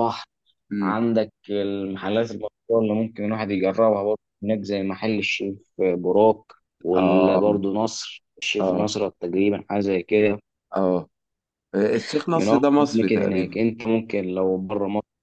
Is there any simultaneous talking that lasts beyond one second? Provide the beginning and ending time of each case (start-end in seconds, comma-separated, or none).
12.3-13.6